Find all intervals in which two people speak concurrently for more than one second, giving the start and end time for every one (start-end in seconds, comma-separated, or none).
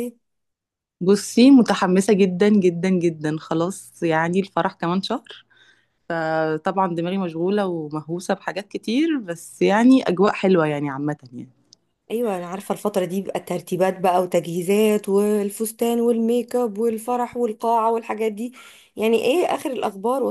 none